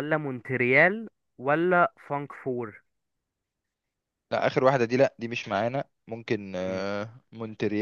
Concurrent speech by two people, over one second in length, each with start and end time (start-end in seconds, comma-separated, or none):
none